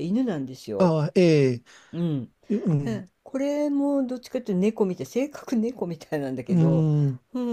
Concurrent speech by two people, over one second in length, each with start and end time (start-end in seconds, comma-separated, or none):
none